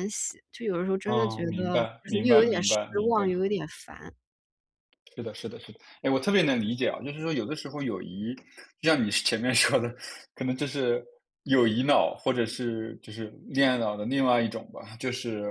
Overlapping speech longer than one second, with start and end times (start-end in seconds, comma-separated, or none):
1.0-3.3